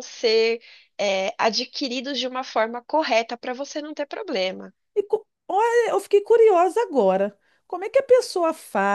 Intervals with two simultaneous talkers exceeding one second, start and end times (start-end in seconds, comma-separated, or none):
none